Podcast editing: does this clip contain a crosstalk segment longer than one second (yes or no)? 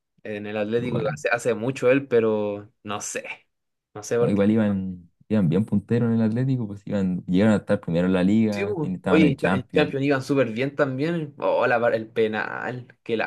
yes